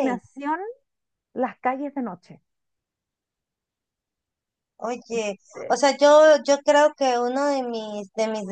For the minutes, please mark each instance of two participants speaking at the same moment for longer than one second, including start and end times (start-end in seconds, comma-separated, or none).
none